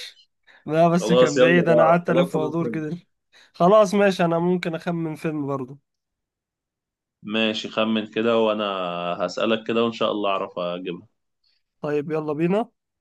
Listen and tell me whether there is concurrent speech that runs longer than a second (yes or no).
yes